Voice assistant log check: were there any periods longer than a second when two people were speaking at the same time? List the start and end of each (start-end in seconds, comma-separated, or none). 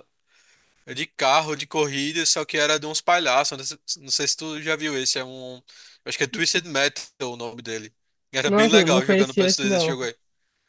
8.4-10.0